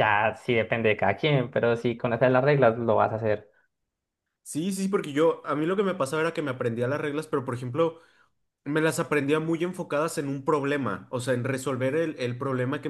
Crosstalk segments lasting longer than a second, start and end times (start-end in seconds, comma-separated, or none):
none